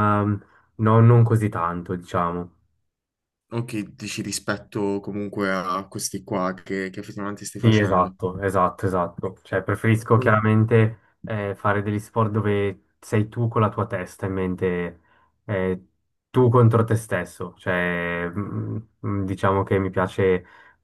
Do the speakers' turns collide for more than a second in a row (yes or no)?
no